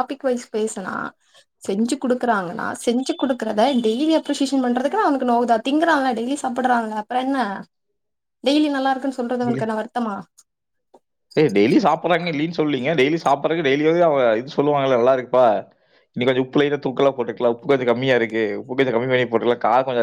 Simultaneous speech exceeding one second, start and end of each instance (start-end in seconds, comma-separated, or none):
none